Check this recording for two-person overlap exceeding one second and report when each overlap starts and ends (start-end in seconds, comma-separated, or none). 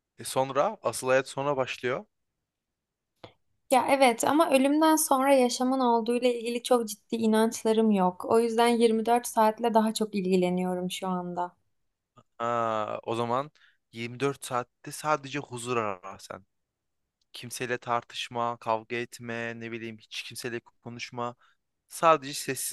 none